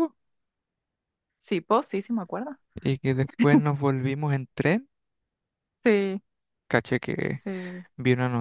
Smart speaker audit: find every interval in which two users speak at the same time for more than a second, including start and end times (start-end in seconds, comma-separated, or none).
none